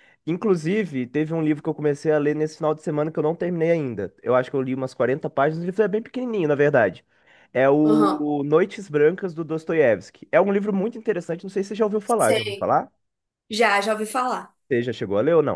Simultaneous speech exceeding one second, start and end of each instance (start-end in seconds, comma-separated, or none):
none